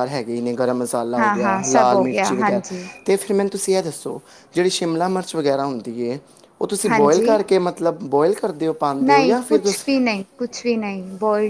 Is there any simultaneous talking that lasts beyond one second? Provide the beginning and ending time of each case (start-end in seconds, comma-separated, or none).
1.2-2.6